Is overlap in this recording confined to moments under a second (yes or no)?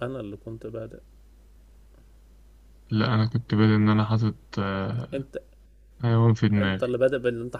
yes